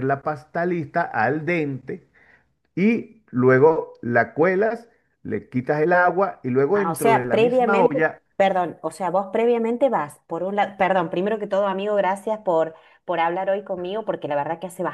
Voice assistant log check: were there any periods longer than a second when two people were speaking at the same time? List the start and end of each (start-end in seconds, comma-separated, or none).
6.7-8.0